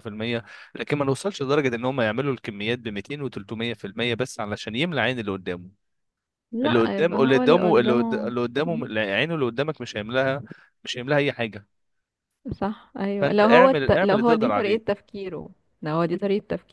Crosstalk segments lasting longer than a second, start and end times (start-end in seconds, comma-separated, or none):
6.7-8.3, 13.2-14.8